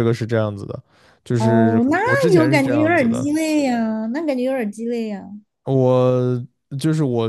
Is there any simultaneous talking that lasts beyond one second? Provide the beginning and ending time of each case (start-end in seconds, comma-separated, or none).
1.4-3.3